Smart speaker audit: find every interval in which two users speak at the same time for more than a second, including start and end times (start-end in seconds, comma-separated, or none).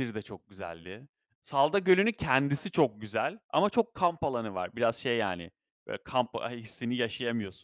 1.8-3.0